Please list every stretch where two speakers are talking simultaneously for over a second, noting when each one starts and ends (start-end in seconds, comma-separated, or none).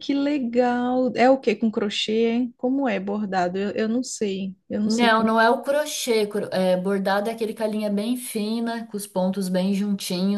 none